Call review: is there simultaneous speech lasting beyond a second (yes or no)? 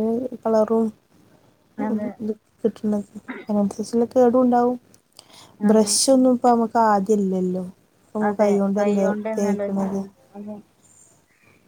yes